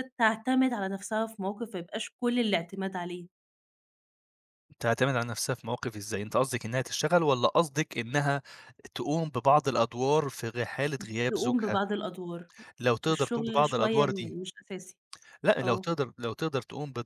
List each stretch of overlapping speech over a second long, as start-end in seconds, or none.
13.1-14.3